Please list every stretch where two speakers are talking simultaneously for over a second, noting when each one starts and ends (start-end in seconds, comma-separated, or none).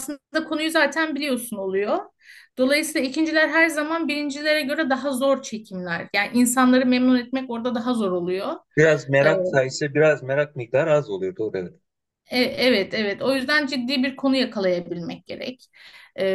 none